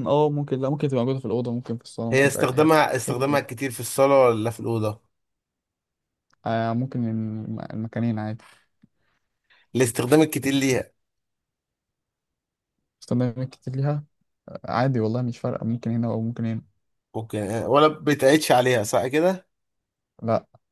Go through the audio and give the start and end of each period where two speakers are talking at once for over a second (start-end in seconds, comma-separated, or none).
2.1-3.6